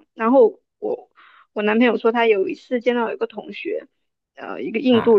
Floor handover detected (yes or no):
no